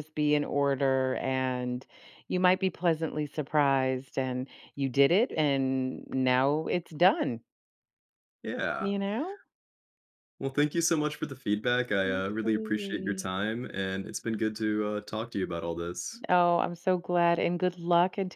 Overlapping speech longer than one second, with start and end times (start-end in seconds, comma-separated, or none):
12.1-13.3